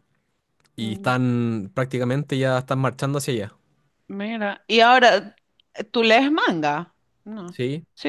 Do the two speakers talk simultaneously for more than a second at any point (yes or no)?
no